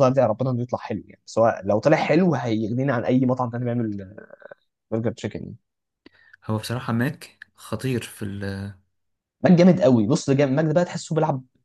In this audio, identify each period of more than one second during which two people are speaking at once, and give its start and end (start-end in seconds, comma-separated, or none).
none